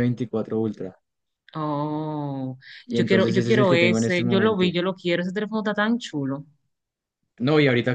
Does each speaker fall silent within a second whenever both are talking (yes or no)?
no